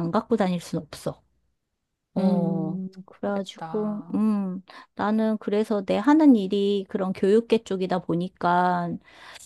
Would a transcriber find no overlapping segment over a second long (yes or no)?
no